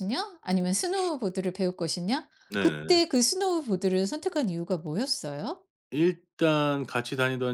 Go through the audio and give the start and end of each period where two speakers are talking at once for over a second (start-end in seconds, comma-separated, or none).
none